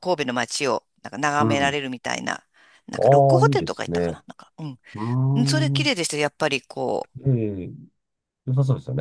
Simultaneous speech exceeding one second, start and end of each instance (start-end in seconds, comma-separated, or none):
3.0-4.2